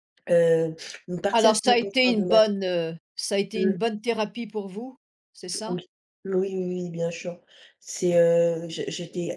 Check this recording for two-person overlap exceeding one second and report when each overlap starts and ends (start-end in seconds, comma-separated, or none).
1.3-2.6